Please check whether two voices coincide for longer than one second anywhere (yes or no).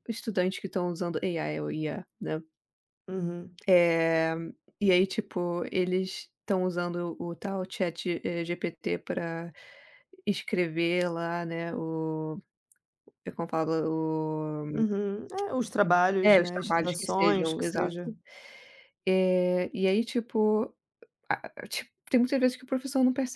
yes